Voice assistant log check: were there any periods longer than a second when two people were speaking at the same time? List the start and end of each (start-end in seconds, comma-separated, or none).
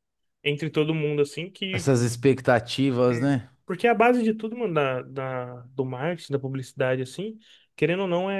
none